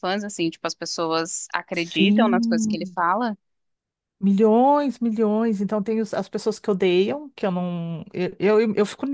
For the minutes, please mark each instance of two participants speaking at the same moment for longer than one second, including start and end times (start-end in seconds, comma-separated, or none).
1.7-3.0